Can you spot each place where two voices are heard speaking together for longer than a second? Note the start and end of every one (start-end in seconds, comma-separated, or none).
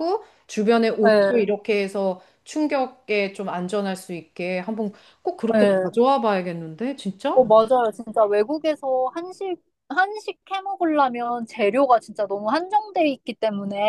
none